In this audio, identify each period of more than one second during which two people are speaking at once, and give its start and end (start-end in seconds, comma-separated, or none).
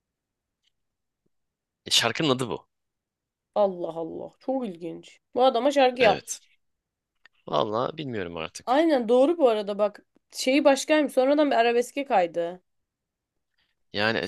none